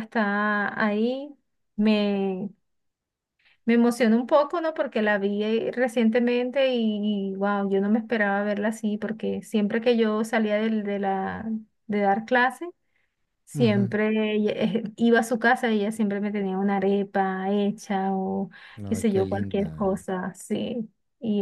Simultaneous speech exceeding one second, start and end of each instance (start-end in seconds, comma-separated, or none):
18.9-20.1